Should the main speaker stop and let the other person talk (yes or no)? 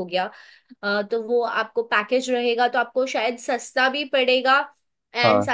no